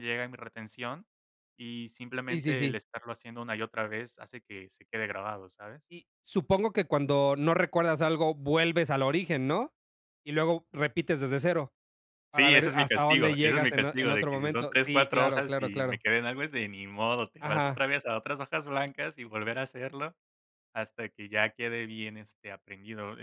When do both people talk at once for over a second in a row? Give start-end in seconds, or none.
12.4-16.0